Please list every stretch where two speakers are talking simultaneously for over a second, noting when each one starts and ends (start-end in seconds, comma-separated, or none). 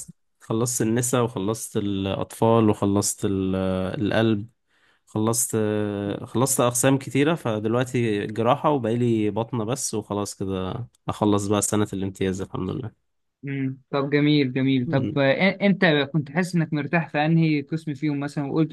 none